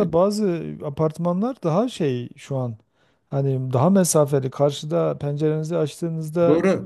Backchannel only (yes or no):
yes